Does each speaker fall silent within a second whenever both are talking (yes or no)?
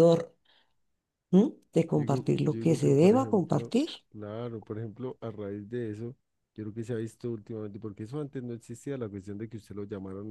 no